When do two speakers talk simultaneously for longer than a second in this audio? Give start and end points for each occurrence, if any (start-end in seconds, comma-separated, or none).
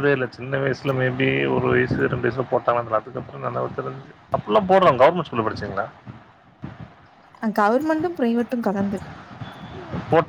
none